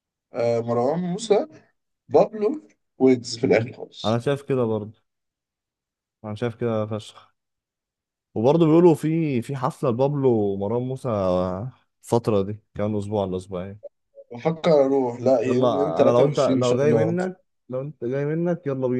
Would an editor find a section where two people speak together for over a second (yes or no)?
yes